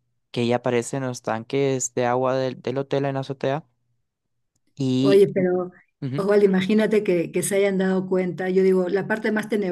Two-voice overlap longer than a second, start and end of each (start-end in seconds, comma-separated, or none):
none